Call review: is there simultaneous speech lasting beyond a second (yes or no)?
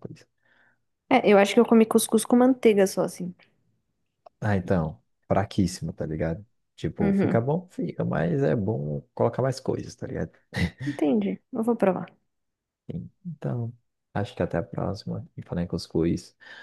no